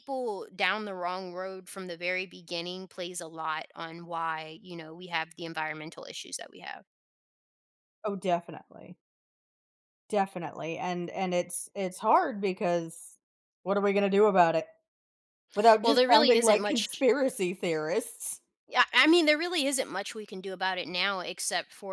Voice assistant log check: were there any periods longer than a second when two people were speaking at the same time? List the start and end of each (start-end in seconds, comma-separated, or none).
15.8-17.0